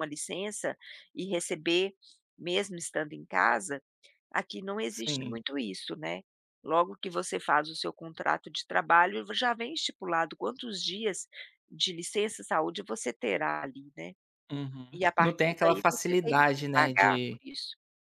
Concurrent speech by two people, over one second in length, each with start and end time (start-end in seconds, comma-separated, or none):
15.0-17.4